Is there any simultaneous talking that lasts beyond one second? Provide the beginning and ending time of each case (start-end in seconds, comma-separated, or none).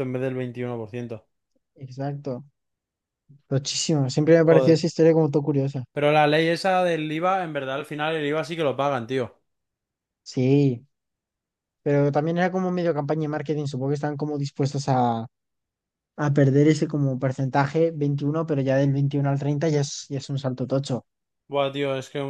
none